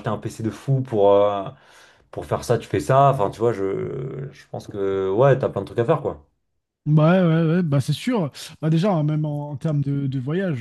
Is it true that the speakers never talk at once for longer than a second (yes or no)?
yes